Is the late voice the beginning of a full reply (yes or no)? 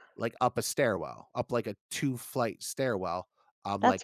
no